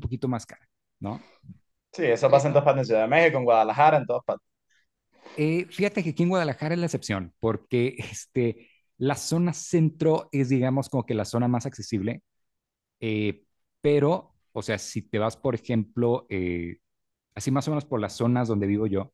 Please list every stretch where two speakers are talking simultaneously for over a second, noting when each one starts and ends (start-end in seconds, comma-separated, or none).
none